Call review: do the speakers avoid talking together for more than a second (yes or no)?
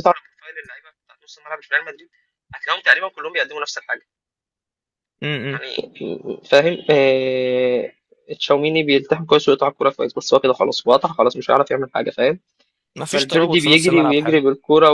no